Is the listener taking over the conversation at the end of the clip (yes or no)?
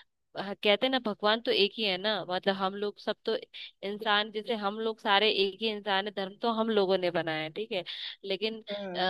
no